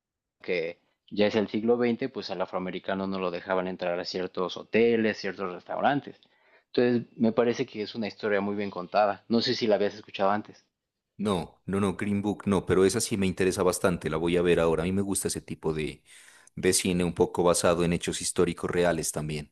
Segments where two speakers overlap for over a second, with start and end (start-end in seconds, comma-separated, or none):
none